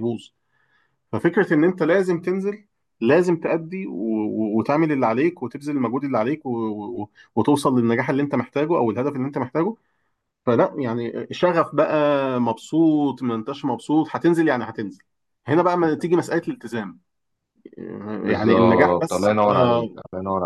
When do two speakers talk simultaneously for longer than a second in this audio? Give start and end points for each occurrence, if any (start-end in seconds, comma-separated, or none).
18.2-20.0